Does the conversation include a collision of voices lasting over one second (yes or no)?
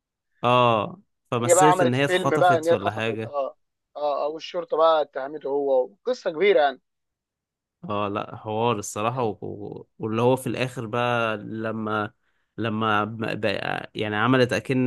yes